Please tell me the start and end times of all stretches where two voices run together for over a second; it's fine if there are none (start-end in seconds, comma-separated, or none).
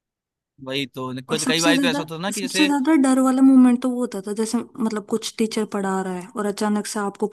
1.3-2.7